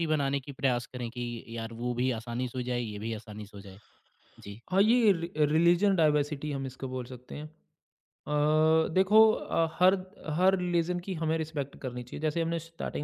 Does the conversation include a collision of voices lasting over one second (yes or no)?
no